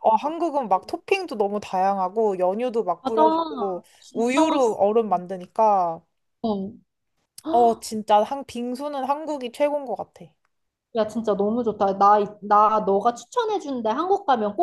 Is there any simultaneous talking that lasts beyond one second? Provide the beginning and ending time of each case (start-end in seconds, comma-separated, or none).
3.0-4.8